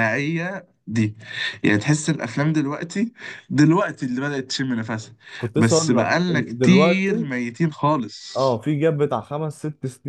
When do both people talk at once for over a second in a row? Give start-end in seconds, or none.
5.6-7.3